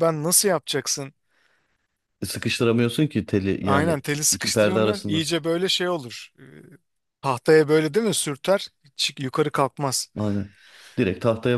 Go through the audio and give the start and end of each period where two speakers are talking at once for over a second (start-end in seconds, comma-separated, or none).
3.6-5.2